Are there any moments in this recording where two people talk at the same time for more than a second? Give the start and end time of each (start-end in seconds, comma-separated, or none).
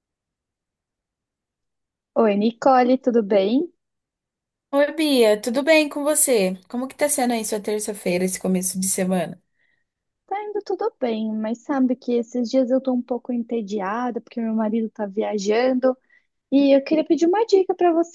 none